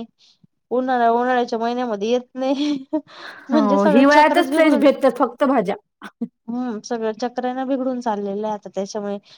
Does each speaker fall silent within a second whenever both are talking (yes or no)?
no